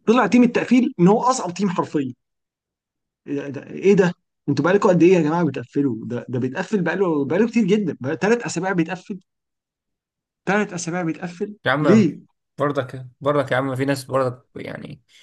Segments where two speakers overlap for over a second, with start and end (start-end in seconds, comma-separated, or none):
none